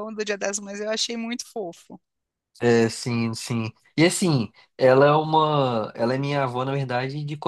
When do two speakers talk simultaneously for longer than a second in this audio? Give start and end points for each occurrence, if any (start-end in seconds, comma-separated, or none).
none